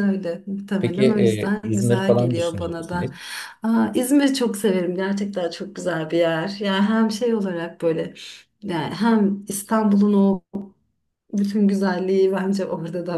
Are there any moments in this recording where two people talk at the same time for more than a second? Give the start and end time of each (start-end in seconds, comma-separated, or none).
0.8-3.1